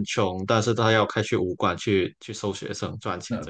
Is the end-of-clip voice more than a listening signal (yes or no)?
yes